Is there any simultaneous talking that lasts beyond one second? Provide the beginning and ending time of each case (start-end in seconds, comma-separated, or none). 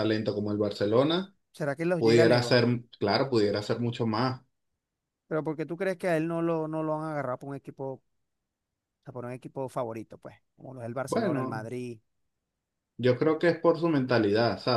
none